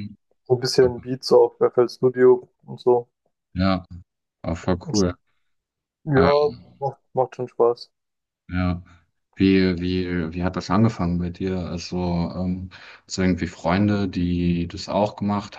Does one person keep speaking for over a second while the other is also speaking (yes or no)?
no